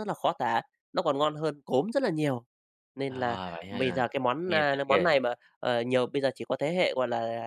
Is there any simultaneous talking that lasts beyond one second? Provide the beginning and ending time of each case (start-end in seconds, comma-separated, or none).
3.1-5.1